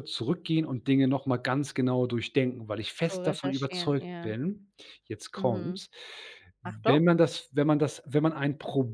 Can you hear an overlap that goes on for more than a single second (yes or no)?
yes